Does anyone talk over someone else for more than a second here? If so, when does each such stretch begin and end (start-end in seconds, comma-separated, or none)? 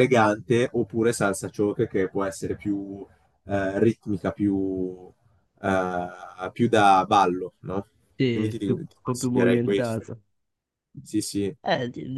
8.3-10.0